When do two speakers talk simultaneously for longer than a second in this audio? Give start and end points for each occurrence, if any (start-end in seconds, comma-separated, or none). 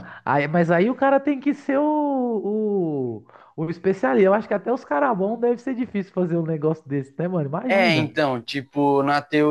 none